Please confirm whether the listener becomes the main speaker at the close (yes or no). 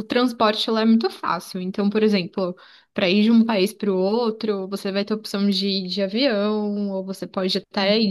no